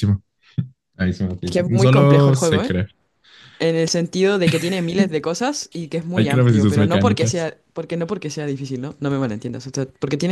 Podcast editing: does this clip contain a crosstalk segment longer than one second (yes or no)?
yes